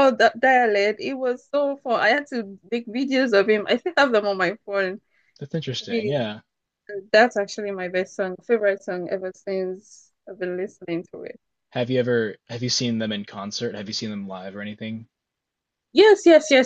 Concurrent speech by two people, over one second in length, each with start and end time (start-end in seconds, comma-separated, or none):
none